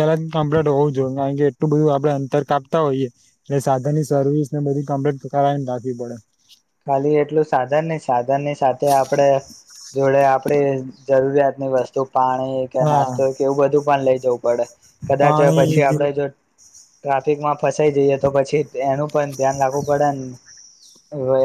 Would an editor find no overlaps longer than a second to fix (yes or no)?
yes